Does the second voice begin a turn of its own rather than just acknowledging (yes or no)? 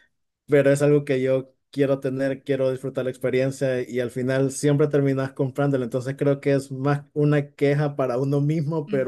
no